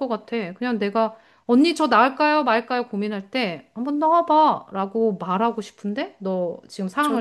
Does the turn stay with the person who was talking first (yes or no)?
no